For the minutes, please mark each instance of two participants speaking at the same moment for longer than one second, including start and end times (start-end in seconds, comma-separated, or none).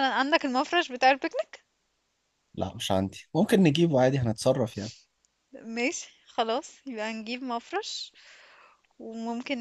none